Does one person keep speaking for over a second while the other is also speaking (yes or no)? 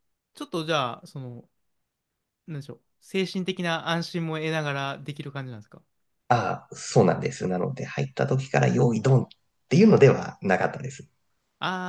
no